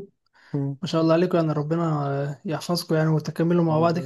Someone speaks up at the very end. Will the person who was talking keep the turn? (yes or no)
no